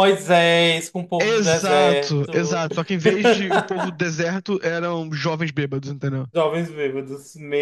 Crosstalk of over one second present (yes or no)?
yes